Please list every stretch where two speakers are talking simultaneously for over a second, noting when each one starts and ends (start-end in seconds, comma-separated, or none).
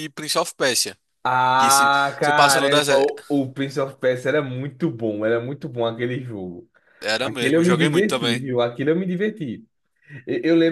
1.6-3.1, 7.2-8.4